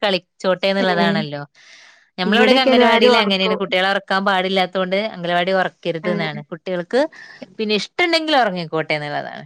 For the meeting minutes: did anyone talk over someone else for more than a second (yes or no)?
yes